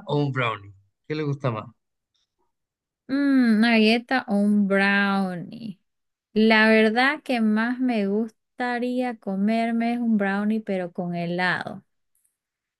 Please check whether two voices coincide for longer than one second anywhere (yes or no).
no